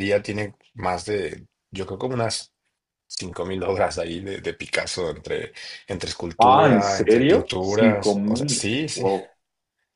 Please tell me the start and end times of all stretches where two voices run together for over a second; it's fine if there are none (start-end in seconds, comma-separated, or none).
6.4-9.0